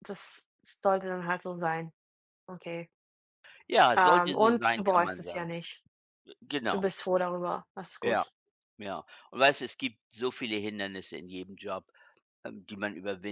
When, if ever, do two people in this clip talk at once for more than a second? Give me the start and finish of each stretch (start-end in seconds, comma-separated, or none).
4.0-5.5